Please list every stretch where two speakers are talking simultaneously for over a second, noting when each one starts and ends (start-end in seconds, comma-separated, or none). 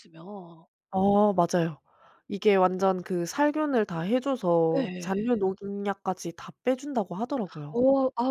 none